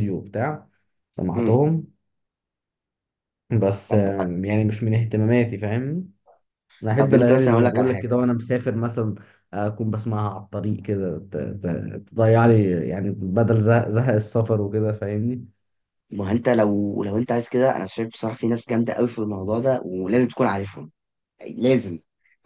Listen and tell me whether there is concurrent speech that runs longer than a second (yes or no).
yes